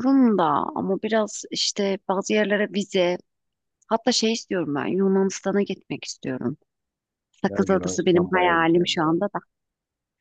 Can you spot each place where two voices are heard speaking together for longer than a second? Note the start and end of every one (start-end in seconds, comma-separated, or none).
7.5-9.2